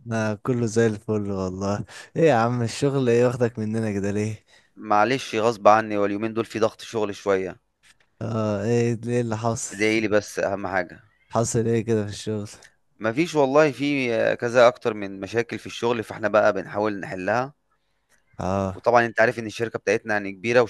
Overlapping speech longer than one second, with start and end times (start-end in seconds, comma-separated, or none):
none